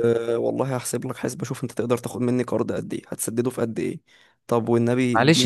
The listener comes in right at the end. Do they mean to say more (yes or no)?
yes